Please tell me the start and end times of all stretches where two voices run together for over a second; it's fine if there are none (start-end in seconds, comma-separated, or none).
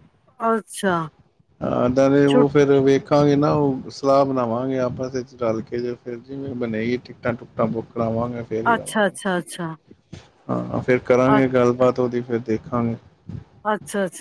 none